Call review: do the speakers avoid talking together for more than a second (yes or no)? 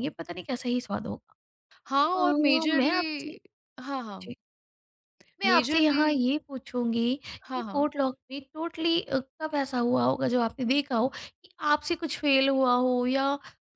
no